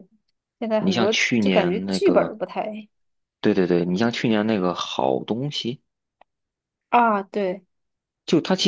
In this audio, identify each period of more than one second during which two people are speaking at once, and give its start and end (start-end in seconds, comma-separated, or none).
0.8-2.4